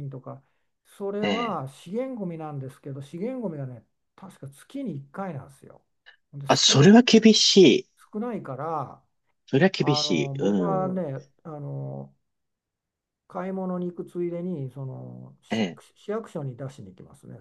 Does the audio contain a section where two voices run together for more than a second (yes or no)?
yes